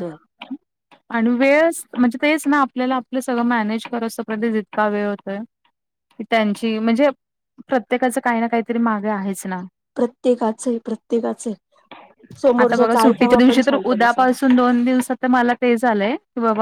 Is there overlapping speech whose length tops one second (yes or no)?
yes